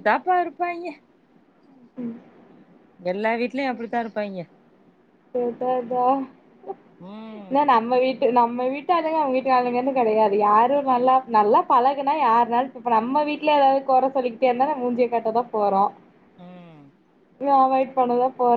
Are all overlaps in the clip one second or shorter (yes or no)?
yes